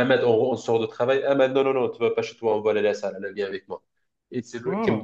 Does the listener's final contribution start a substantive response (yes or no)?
no